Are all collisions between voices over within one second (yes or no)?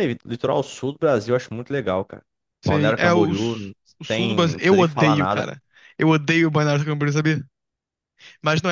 no